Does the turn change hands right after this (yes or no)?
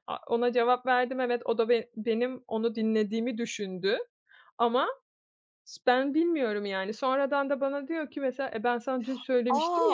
yes